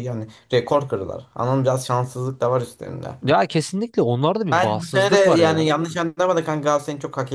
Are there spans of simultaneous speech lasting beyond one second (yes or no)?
yes